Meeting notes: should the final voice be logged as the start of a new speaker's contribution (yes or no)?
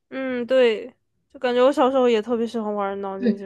yes